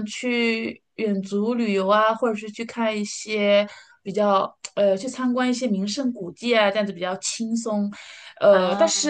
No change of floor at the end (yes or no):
yes